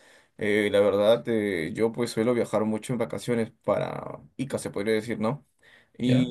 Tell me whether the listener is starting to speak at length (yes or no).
no